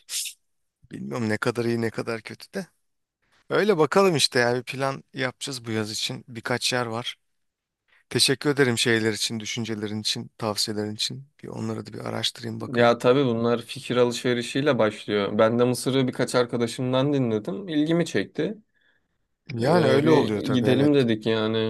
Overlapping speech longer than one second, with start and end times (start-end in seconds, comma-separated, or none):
19.6-20.9